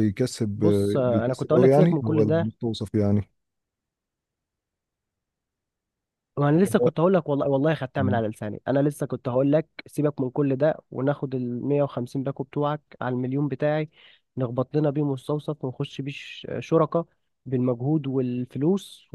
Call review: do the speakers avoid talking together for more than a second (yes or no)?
no